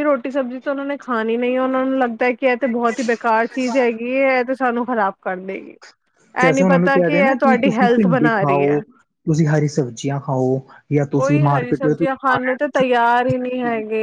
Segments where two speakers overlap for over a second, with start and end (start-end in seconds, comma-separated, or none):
6.5-8.8